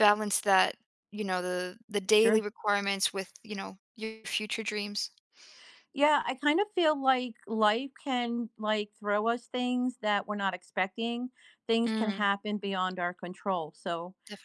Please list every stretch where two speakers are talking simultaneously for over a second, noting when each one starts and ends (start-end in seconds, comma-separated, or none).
none